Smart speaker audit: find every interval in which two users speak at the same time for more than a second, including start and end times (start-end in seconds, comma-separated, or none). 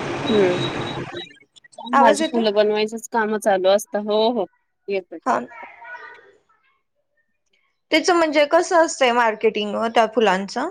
none